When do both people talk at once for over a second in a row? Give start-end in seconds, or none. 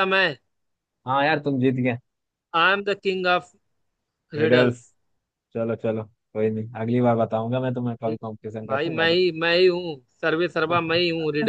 none